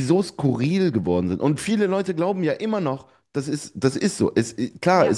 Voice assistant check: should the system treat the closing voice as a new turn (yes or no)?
no